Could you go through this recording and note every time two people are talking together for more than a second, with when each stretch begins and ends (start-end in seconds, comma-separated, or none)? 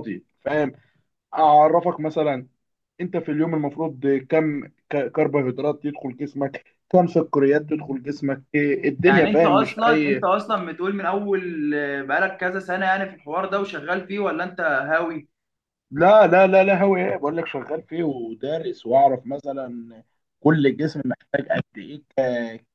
9.0-10.3